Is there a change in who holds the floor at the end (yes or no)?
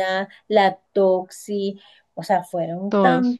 no